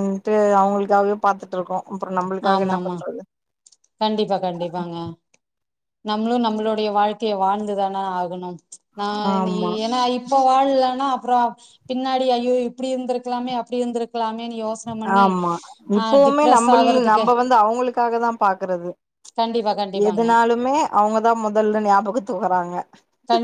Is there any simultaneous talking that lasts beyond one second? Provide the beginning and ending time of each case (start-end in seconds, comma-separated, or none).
none